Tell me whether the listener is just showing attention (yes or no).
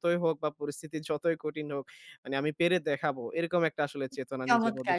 no